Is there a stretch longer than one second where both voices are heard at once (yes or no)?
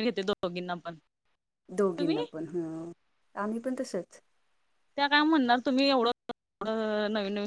no